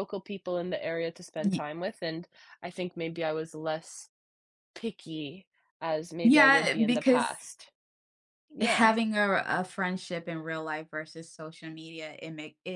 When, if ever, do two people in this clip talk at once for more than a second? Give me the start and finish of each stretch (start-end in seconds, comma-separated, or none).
6.2-7.5